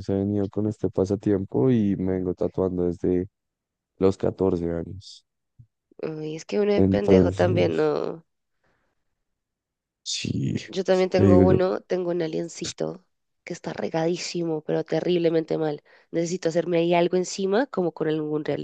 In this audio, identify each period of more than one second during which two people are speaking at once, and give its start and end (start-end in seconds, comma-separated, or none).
6.8-8.0